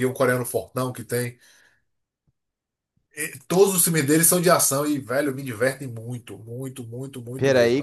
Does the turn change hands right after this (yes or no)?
yes